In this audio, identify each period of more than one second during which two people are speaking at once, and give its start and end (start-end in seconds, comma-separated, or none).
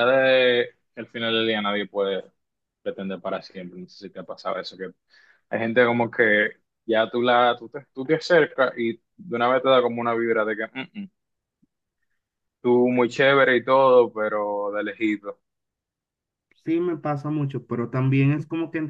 none